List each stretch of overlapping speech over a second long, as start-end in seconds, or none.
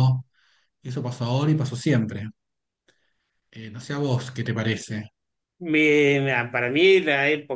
none